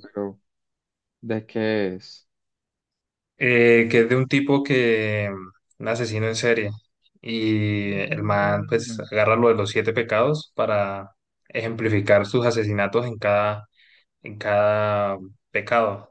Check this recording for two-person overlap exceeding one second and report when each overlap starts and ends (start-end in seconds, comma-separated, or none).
7.8-9.1